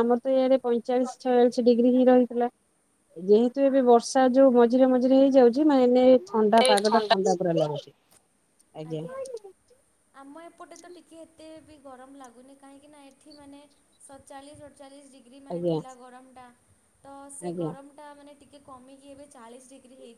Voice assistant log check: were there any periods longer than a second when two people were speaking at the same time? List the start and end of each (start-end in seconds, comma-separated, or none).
none